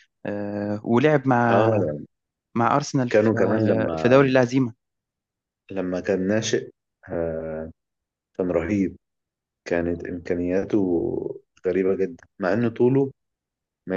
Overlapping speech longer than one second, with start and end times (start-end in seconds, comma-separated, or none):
3.1-4.3